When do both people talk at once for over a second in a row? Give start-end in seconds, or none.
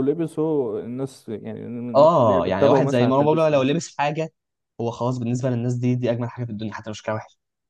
1.9-3.6